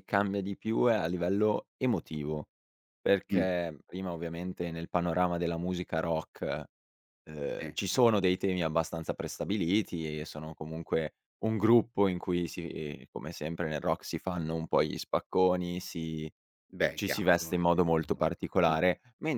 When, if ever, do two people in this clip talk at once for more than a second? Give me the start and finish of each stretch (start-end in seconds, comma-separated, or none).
16.9-18.3